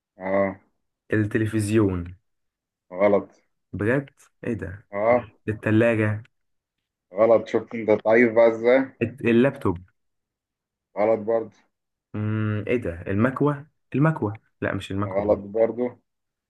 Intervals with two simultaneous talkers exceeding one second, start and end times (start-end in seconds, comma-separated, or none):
none